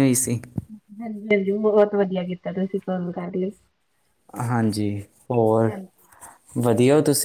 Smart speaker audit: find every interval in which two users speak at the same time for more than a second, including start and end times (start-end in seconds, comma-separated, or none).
none